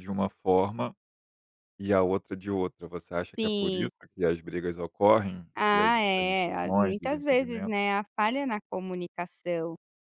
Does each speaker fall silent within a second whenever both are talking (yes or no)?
no